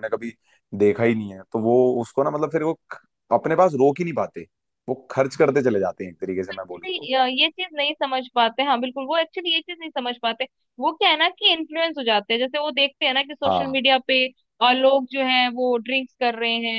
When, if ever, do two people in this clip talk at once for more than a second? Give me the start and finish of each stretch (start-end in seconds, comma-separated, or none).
none